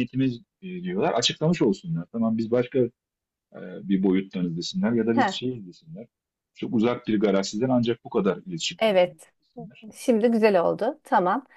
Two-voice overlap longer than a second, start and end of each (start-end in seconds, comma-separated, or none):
none